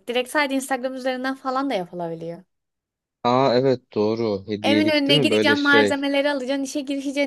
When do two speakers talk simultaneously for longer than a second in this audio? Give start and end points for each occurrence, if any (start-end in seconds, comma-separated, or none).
4.6-6.0